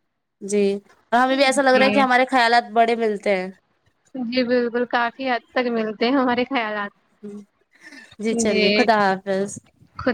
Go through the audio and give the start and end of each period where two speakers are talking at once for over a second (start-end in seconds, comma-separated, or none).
none